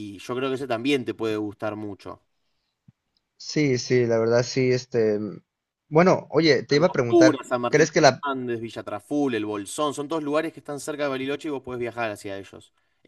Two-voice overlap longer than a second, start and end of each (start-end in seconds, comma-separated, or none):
6.7-8.3